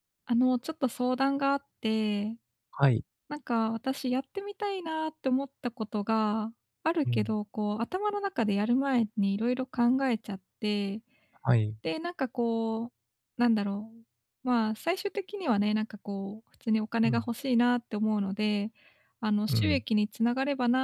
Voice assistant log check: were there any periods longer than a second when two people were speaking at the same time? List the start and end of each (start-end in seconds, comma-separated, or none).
none